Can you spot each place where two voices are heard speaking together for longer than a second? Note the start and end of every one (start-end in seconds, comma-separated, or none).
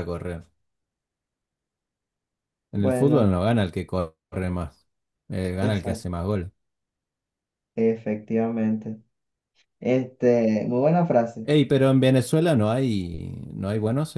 none